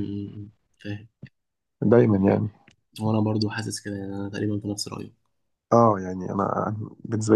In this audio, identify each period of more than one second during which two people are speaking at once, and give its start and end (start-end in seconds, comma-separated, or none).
none